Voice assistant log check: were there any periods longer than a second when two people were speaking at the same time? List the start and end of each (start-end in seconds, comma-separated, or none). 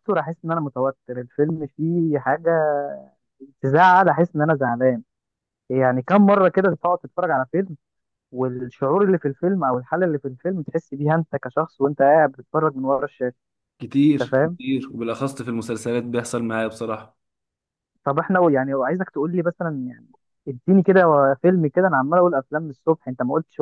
none